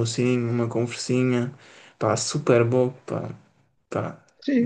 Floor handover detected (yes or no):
yes